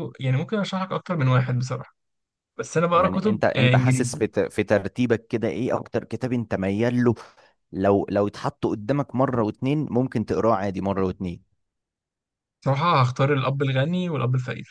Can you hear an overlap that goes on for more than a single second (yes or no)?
yes